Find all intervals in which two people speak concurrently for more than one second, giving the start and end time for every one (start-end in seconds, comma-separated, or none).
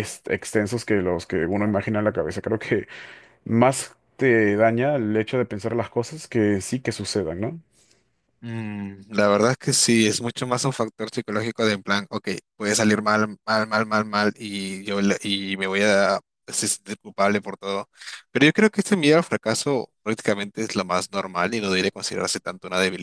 none